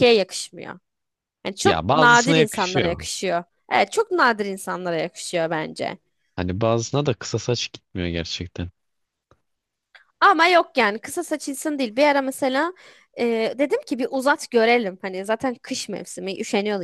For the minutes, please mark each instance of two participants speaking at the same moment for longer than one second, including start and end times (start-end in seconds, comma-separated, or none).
1.6-3.0